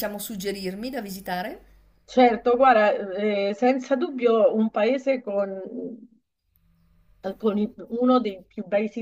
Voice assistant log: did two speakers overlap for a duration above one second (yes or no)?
no